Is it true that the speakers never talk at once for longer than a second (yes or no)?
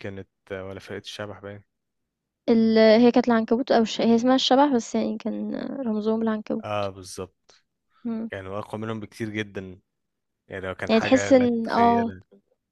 no